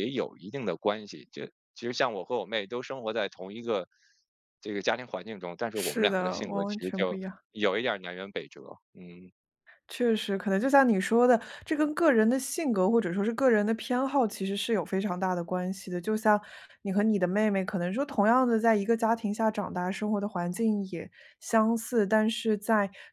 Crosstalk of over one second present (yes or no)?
yes